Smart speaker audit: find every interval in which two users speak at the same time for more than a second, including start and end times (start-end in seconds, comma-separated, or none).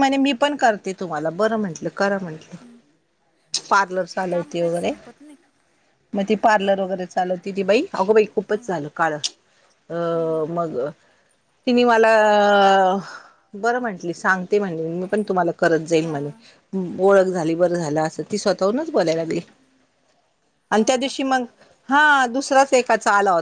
none